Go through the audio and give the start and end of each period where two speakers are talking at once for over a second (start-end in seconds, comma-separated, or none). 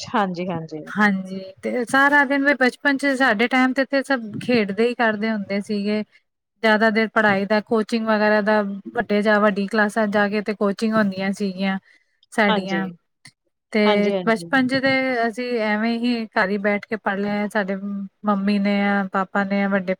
none